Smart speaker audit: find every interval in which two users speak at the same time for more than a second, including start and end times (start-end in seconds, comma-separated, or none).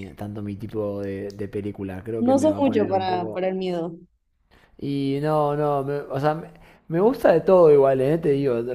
2.2-3.5